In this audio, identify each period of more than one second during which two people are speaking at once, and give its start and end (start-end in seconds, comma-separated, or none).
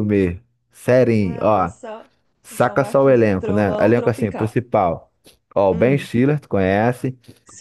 2.5-4.5